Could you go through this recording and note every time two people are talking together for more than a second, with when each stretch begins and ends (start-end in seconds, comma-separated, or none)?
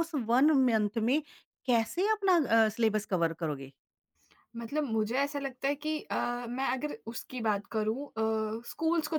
none